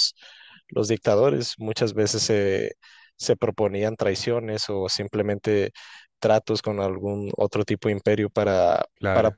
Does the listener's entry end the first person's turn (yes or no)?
no